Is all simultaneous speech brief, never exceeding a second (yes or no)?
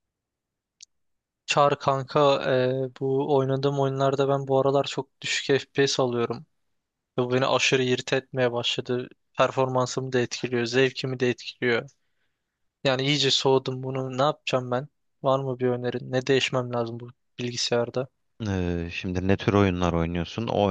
yes